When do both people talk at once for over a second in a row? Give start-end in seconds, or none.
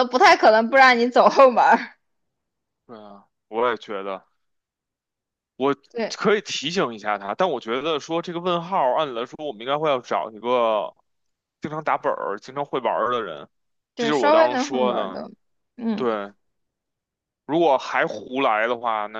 14.0-15.2